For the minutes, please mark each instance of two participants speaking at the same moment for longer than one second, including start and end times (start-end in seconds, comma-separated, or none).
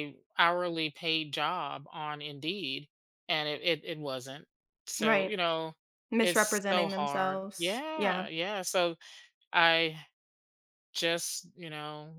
6.2-8.3